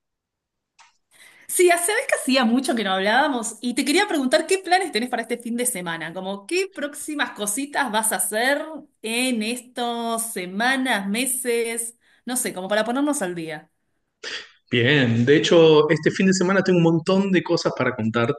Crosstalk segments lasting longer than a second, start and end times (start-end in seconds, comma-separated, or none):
none